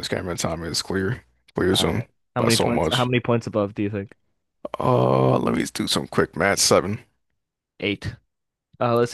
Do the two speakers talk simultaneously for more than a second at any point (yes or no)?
yes